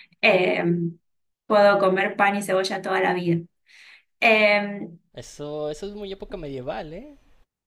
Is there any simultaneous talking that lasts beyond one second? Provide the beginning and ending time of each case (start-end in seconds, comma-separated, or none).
none